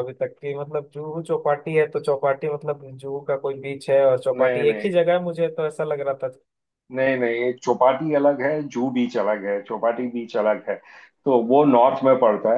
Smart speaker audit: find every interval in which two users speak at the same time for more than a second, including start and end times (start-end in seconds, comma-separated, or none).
none